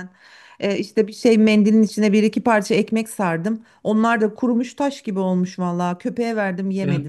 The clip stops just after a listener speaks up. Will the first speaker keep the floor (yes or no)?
no